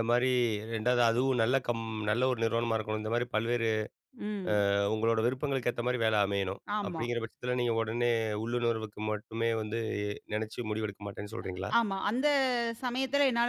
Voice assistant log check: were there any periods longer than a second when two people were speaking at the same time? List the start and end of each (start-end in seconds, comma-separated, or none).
none